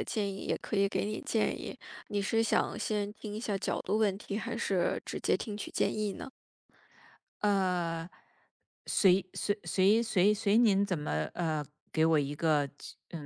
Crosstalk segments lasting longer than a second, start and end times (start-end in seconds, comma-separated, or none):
none